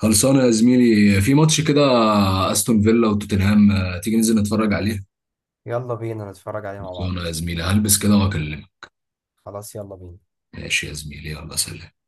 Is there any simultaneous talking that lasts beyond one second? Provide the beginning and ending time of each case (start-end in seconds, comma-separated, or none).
none